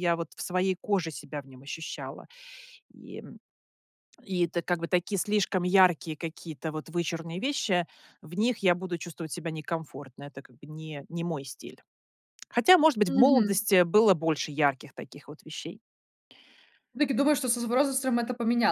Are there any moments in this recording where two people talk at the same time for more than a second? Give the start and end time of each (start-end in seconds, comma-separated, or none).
none